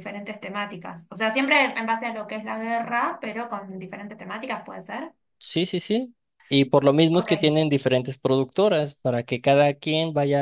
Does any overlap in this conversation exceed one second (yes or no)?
no